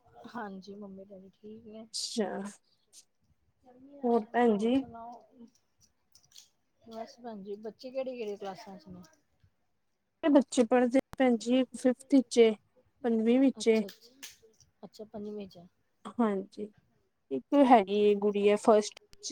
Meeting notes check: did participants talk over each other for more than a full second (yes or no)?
no